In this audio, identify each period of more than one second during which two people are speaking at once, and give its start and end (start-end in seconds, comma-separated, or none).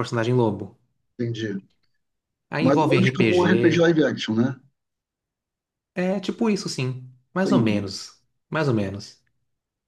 2.6-3.9